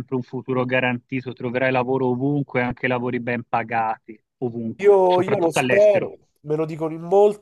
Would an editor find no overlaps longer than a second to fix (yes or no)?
no